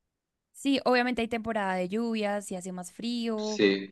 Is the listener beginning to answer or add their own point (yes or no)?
no